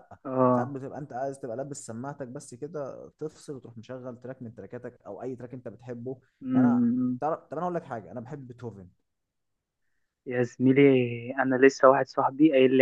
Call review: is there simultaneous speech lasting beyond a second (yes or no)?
no